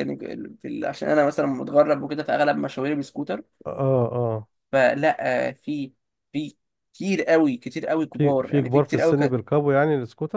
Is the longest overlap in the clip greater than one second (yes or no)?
yes